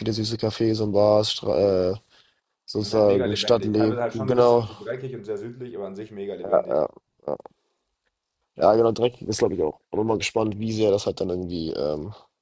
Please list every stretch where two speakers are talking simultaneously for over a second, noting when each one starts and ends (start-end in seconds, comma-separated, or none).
2.8-4.7